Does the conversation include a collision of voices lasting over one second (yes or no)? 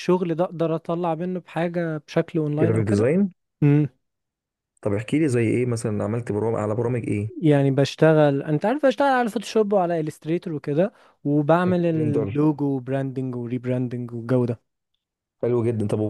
no